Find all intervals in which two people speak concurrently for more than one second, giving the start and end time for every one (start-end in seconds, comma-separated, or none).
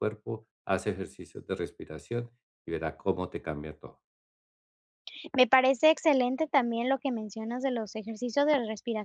none